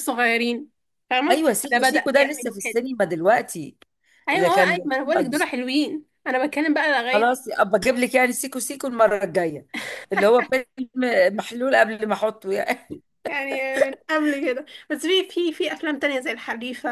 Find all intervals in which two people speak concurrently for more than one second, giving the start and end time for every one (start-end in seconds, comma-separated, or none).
1.3-2.8